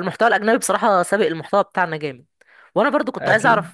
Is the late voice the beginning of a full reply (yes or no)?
no